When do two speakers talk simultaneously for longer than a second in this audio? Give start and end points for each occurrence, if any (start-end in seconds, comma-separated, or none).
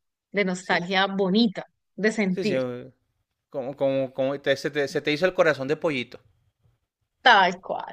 none